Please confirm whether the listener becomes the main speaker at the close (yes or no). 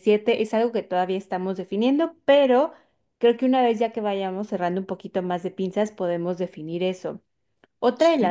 no